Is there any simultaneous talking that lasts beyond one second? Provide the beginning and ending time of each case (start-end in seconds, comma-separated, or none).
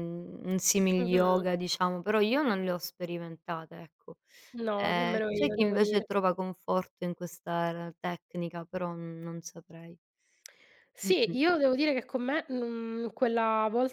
4.8-6.1